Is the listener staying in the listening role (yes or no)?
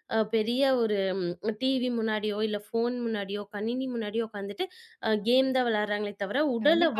no